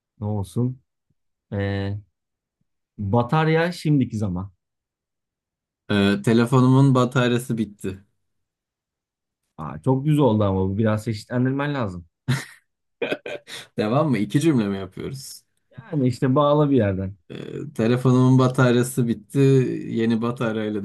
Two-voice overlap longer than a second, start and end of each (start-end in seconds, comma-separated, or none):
none